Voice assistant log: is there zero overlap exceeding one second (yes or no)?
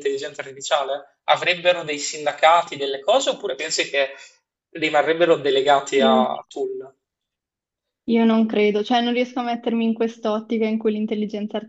yes